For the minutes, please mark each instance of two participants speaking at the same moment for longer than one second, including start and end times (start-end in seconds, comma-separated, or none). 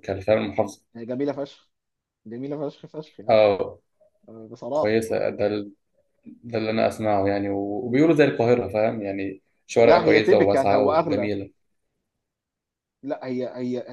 9.8-11.3